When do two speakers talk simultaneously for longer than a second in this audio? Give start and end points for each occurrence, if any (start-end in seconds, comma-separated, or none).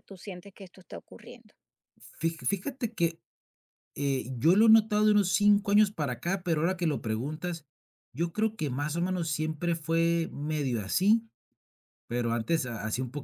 none